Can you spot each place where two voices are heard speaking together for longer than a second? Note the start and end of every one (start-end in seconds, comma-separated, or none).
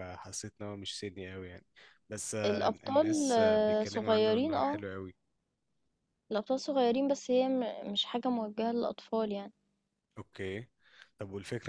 2.4-4.8